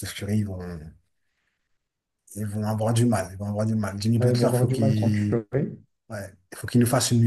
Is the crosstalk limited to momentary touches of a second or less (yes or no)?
no